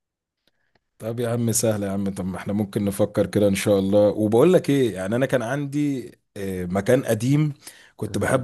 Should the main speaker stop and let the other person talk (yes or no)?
no